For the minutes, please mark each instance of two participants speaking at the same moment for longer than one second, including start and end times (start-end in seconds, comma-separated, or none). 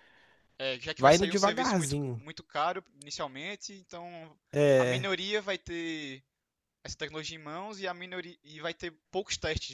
1.0-2.2